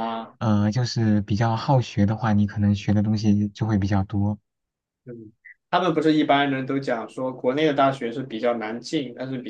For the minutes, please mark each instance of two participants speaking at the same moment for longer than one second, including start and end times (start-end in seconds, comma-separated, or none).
none